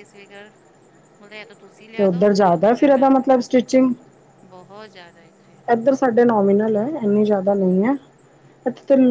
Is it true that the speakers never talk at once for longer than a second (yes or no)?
yes